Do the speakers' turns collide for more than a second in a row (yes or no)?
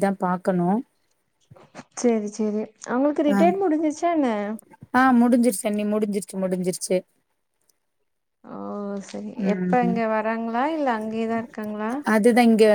no